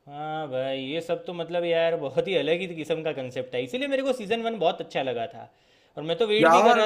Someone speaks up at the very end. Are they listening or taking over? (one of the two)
listening